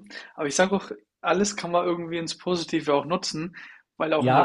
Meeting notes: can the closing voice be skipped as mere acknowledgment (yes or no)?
no